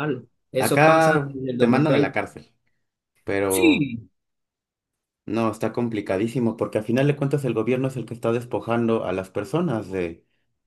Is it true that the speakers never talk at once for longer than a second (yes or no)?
no